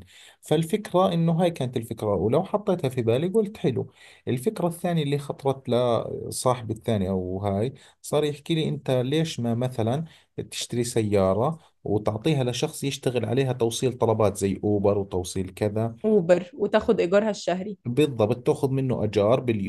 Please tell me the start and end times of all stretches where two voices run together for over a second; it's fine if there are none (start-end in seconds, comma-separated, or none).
none